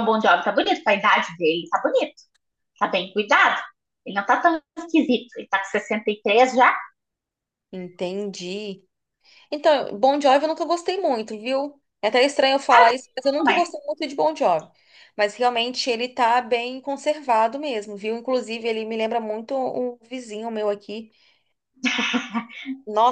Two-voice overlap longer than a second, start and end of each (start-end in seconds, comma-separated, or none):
none